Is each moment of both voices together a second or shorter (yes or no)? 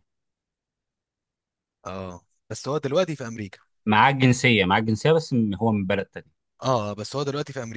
yes